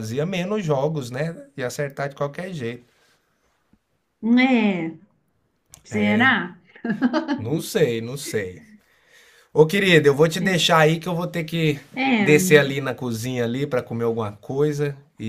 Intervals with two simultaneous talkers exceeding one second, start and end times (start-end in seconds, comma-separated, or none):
none